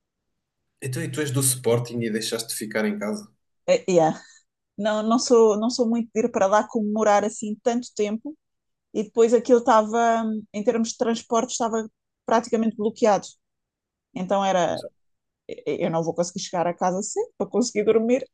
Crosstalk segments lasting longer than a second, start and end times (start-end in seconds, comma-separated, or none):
none